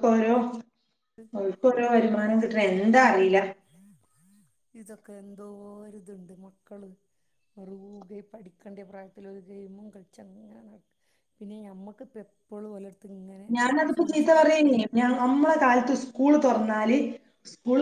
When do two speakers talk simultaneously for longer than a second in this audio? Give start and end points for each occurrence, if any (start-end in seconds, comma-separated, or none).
none